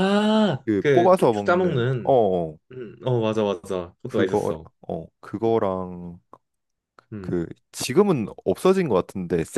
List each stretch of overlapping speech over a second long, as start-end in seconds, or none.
0.7-2.1